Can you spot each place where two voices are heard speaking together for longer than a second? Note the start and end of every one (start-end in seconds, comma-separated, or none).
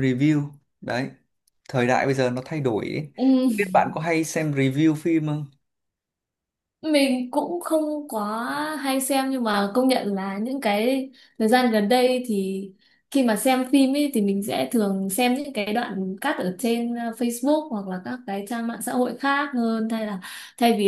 none